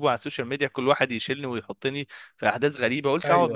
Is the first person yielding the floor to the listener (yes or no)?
no